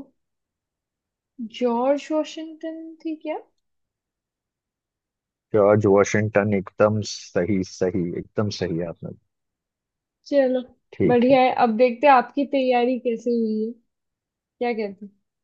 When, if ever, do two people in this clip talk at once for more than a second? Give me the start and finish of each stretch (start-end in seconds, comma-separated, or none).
none